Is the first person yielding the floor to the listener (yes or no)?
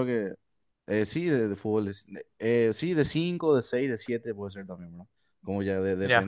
no